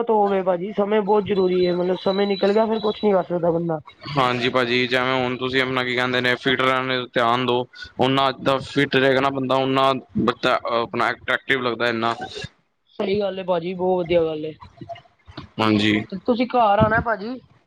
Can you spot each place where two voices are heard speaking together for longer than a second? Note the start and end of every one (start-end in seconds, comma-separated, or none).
none